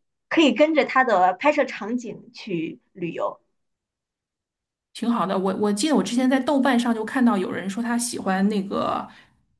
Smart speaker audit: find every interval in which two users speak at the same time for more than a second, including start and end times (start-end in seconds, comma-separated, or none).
none